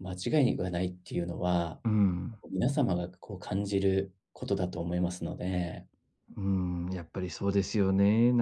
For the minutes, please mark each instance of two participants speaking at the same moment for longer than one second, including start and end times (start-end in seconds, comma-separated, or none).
none